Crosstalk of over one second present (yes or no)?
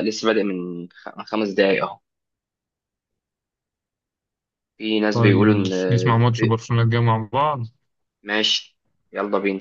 yes